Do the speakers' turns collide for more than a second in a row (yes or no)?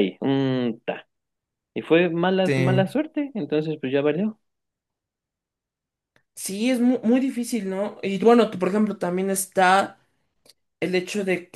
no